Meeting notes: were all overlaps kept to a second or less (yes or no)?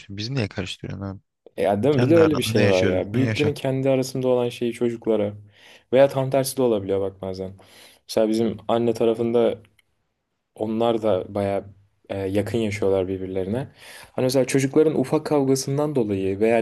no